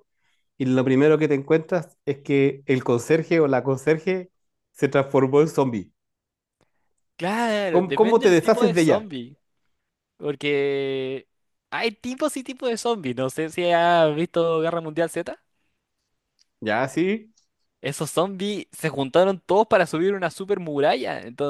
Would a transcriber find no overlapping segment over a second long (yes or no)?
no